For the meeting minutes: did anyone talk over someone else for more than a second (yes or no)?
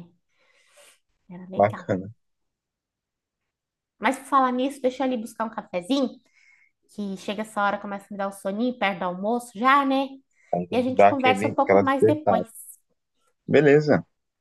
yes